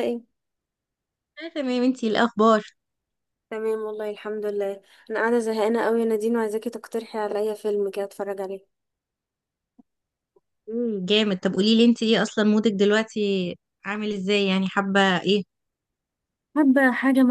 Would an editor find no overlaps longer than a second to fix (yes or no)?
yes